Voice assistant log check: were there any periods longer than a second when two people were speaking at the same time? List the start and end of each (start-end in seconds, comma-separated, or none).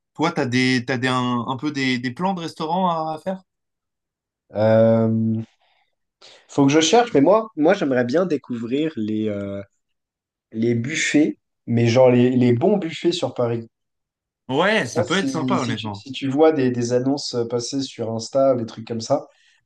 14.7-16.0